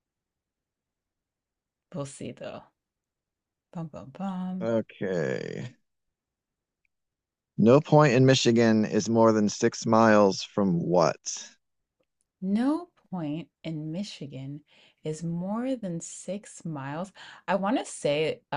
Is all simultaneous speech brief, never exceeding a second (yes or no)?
yes